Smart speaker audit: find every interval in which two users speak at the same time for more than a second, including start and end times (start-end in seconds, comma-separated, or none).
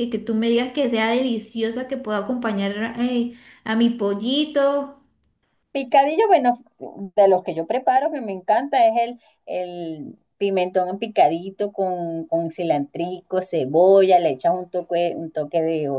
none